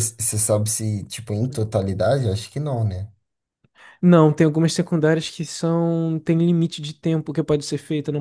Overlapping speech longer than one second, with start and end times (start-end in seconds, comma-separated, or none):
none